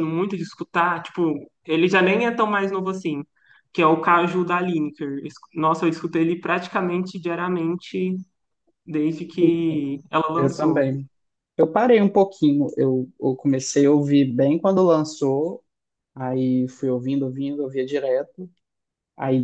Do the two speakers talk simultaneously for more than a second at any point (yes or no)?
no